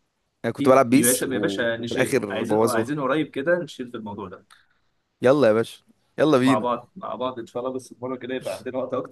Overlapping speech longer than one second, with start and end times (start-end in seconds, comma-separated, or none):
0.6-2.9